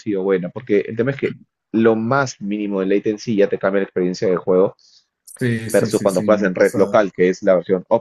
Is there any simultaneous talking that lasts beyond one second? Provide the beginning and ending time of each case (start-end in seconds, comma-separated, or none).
5.7-7.0